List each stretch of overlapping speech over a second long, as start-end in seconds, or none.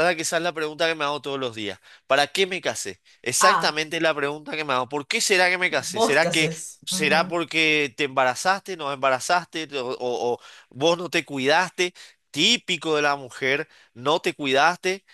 5.7-7.3